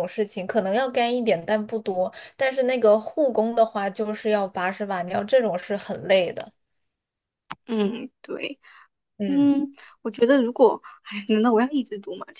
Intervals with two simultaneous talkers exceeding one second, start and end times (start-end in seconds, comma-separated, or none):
none